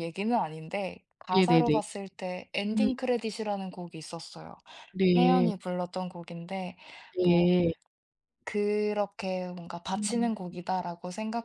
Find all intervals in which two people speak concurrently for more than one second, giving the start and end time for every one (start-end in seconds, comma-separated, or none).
none